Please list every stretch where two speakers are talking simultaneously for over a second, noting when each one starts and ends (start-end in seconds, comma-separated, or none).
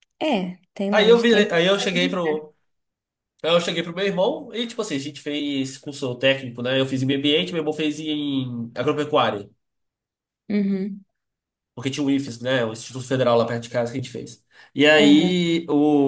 0.9-2.2